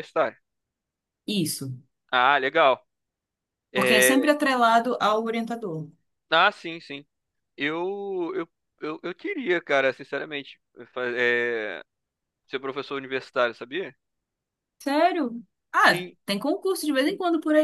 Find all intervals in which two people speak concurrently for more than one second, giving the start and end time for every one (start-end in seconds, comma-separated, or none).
none